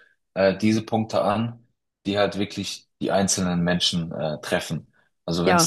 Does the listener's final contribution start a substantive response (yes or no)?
no